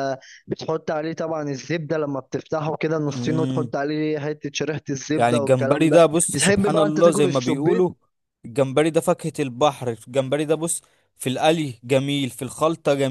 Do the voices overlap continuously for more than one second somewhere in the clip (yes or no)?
yes